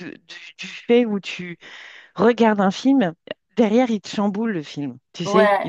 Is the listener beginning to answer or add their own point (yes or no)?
no